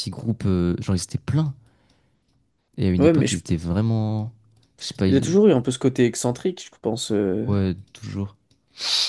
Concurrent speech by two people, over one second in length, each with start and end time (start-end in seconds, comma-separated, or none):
none